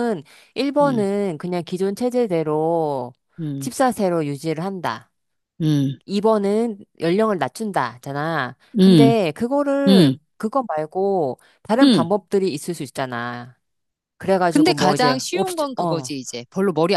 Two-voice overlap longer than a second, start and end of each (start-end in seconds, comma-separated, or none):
14.5-16.1